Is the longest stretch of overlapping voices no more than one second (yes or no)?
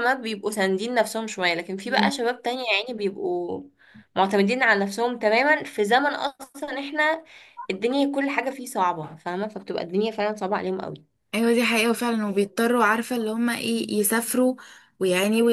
yes